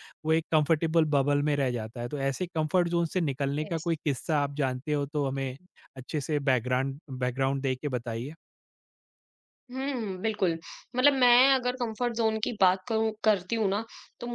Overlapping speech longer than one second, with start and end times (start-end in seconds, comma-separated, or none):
none